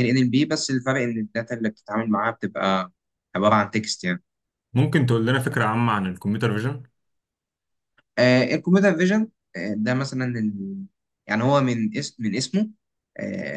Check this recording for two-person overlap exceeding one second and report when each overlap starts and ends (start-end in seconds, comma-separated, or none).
none